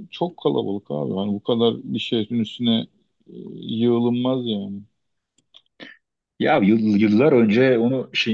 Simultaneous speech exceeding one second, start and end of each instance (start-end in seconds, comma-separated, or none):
none